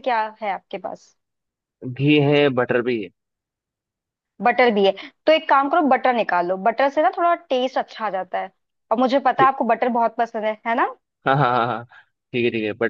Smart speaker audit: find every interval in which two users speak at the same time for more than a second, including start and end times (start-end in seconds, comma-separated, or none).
none